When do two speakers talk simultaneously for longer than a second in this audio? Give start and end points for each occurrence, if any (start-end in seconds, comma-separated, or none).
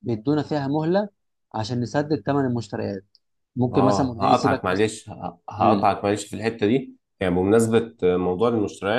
3.7-4.9